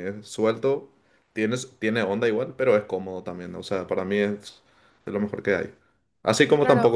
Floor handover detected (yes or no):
no